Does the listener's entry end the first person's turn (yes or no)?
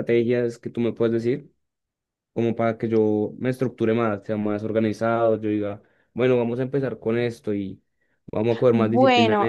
yes